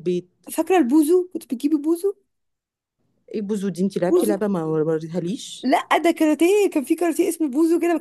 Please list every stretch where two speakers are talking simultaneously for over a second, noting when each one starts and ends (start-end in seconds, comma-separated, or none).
none